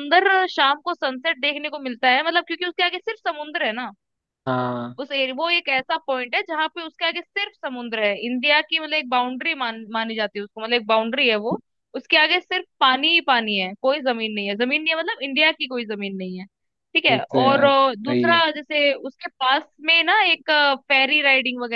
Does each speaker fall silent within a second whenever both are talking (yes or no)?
no